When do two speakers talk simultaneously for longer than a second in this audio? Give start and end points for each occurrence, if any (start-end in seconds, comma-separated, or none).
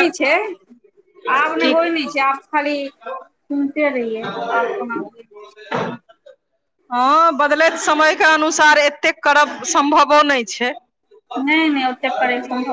none